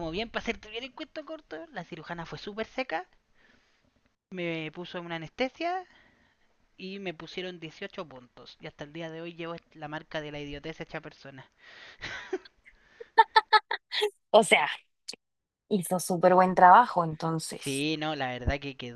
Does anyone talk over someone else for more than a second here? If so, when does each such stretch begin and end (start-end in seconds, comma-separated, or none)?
none